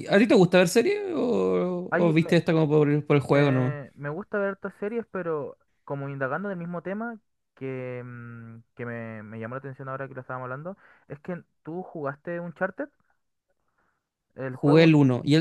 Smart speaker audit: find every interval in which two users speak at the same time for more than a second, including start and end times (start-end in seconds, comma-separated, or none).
none